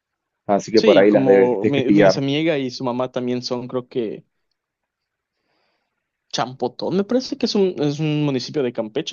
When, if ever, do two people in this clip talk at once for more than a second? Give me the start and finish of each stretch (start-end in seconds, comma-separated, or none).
0.8-2.2